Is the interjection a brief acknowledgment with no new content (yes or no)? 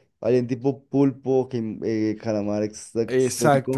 no